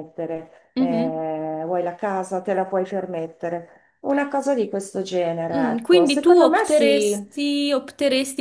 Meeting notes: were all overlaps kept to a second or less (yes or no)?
no